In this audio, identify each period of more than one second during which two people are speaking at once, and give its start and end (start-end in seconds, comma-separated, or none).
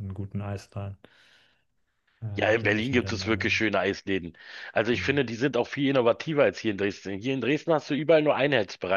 2.4-3.5